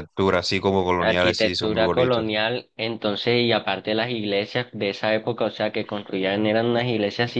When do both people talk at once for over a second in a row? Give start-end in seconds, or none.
1.0-2.3